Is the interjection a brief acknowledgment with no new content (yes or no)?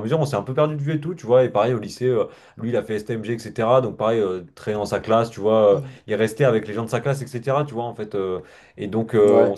yes